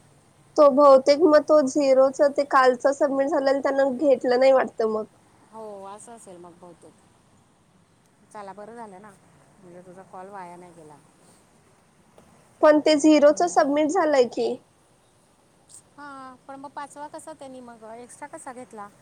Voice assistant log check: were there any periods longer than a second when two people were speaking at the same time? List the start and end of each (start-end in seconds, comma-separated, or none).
none